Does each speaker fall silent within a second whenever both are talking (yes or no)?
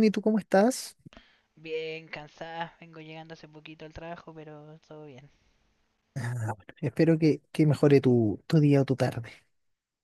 yes